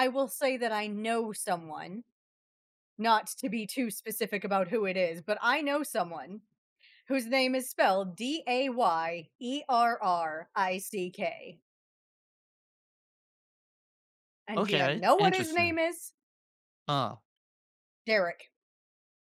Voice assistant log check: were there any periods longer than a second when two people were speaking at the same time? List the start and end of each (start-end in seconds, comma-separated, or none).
14.6-15.8